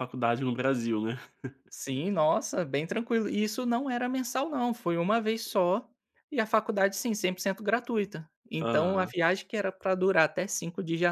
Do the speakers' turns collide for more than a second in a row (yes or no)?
no